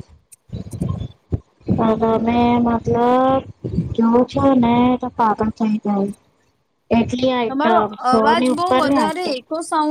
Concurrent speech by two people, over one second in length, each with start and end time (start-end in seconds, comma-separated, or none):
7.5-9.4